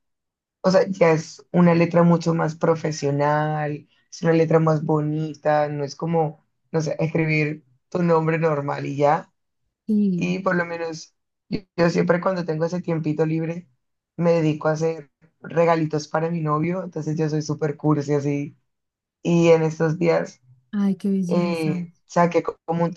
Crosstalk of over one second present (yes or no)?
no